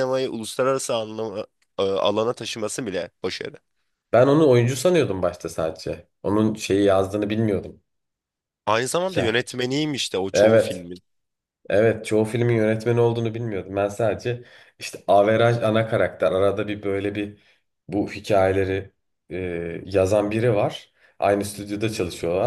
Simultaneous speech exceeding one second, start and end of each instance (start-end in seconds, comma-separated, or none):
none